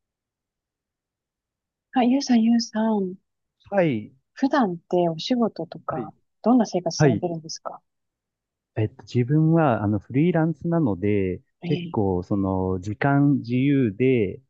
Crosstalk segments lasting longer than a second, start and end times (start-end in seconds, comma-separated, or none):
none